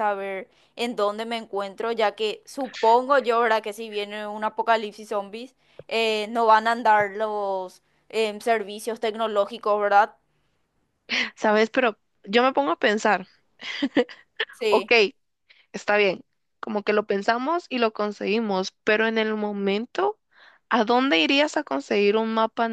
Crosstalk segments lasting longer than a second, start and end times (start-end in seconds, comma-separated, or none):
none